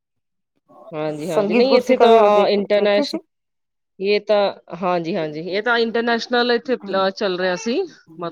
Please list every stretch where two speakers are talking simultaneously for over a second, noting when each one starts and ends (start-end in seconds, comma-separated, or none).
1.3-3.2